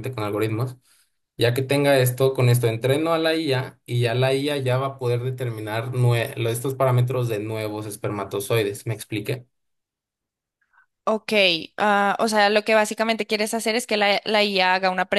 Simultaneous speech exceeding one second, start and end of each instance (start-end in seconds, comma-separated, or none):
none